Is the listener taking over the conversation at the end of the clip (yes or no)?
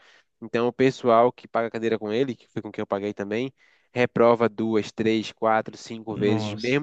no